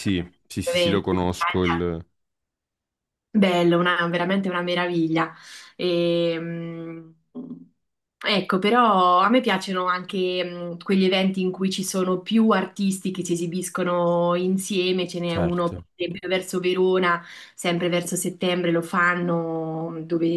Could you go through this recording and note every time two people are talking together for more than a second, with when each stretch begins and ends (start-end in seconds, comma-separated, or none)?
0.6-1.8